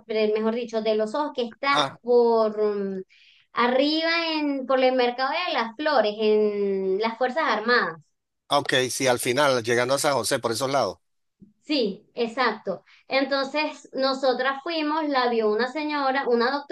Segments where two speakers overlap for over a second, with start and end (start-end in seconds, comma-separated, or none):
none